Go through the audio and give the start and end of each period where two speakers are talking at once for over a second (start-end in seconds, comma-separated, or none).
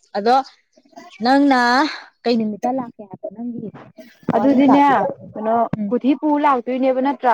none